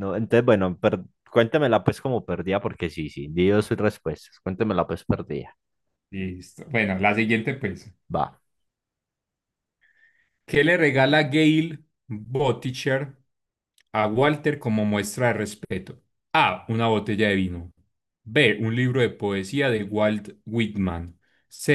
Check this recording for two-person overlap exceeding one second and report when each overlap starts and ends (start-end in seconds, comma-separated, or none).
none